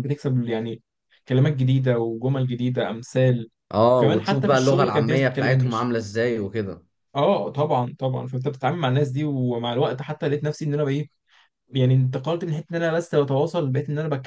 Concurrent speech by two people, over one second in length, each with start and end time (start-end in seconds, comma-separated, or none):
3.9-5.9